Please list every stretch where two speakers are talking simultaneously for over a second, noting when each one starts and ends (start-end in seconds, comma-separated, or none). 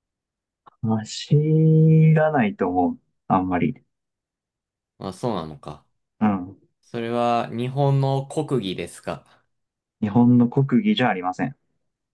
none